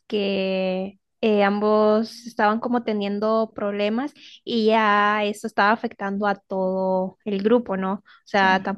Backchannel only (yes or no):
yes